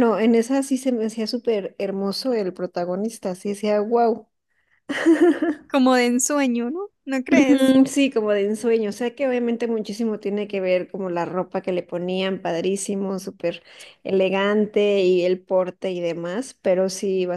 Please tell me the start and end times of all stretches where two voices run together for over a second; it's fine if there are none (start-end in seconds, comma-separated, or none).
none